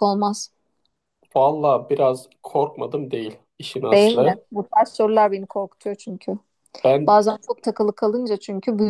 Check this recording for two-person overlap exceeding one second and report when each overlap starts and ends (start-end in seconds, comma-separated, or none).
none